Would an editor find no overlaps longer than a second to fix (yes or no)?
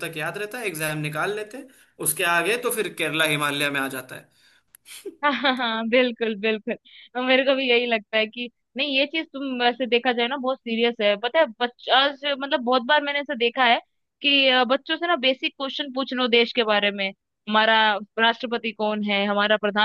yes